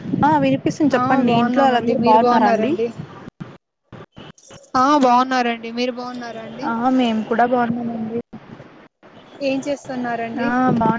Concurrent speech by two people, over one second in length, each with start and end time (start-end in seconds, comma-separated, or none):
1.0-2.7